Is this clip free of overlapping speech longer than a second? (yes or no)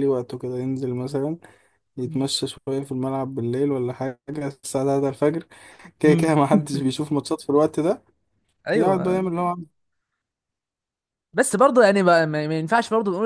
yes